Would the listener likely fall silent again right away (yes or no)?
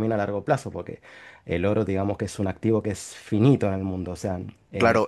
no